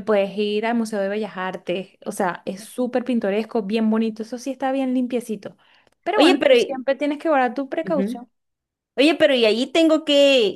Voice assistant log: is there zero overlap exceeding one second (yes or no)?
yes